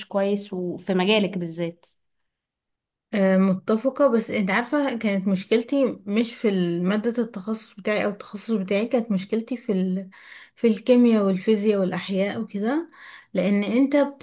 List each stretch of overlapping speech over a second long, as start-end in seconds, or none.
none